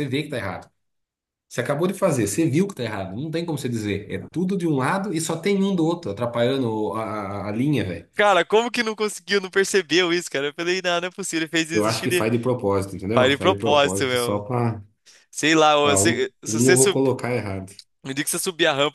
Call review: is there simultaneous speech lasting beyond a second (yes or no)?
yes